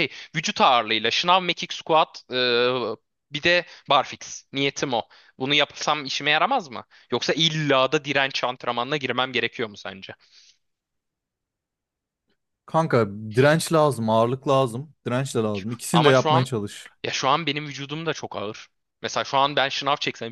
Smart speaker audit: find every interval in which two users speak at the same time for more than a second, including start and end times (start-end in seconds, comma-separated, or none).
none